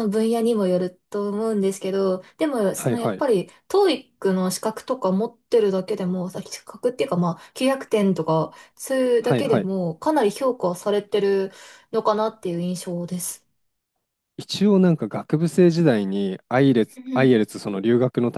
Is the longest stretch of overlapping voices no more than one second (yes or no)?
yes